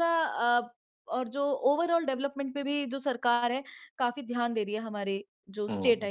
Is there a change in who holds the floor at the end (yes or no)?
yes